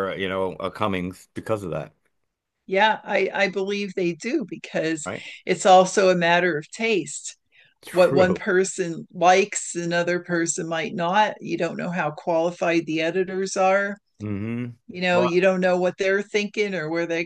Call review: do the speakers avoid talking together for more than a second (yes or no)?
yes